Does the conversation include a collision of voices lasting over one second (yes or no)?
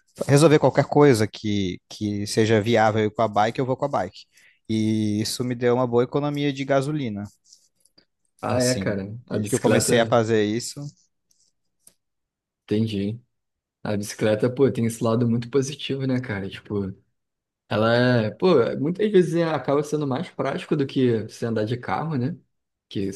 yes